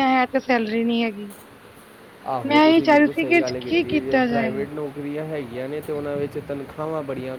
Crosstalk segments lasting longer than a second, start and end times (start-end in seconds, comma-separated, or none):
2.5-4.6